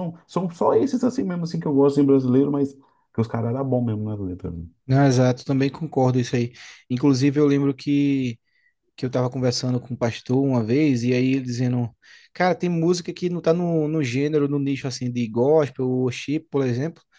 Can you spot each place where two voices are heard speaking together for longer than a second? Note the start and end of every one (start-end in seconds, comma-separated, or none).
none